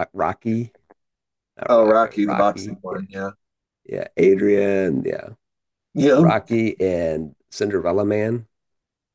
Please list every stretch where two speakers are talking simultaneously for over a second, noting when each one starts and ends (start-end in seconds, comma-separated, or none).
1.7-3.0